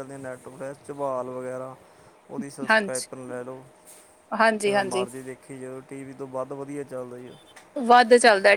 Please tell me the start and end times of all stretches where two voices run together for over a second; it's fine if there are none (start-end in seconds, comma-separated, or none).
none